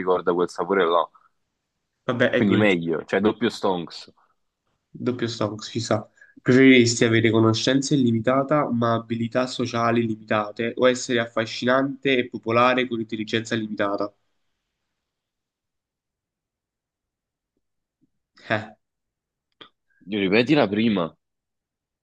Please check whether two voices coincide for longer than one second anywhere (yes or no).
no